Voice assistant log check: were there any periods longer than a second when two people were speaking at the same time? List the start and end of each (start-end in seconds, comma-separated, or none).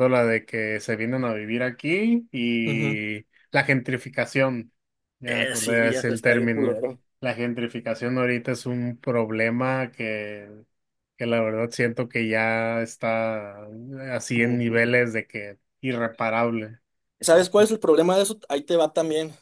5.3-6.8